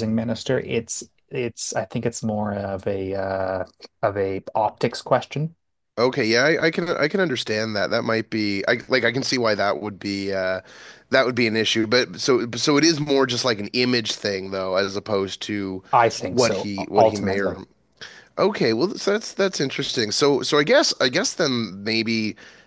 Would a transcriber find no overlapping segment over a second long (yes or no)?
no